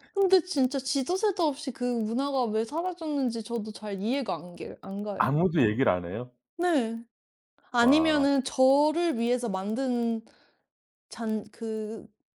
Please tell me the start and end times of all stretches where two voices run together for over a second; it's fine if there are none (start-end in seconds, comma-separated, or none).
none